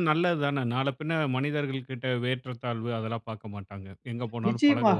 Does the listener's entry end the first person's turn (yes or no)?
yes